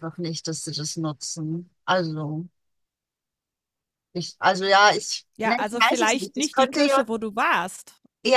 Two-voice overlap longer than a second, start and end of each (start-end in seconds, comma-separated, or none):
5.4-7.1